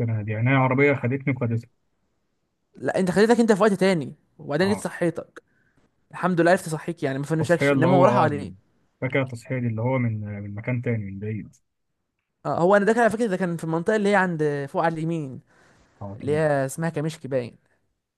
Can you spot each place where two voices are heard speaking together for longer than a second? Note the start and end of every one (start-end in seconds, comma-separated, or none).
7.3-8.5